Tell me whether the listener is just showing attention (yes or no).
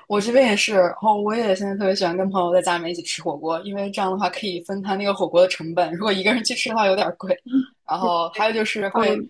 yes